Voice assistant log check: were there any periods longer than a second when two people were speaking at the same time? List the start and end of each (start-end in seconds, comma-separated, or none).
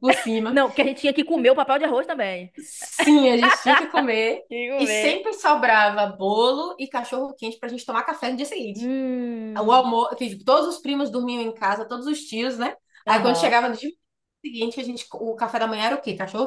none